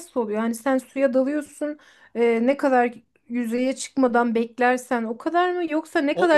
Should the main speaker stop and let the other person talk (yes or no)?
yes